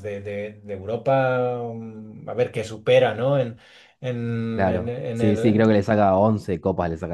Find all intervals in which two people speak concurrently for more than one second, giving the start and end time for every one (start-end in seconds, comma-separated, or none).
4.5-5.8